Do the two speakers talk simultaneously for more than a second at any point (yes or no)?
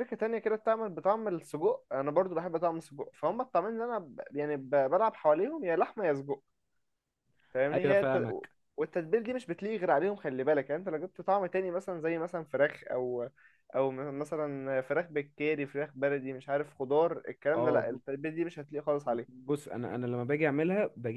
no